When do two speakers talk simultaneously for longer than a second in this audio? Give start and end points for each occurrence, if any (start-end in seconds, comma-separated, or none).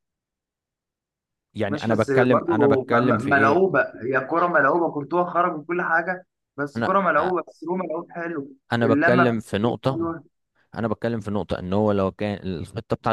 1.7-3.7, 8.7-10.1